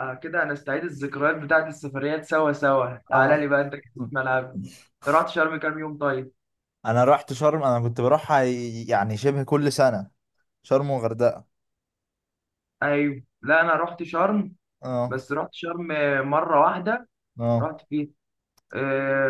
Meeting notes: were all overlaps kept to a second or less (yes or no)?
yes